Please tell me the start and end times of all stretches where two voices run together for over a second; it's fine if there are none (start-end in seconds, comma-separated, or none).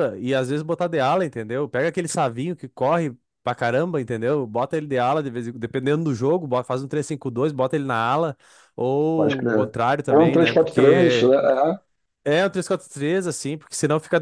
9.1-11.3